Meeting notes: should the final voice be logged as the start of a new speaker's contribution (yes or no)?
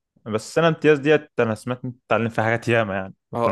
yes